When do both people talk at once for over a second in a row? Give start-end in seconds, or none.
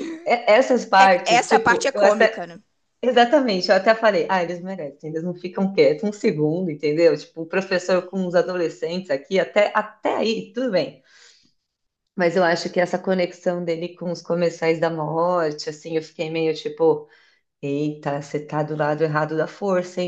1.0-2.5